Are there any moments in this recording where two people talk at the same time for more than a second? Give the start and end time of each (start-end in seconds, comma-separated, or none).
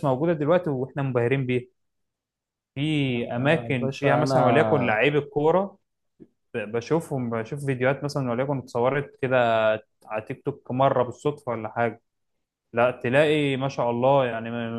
3.1-5.0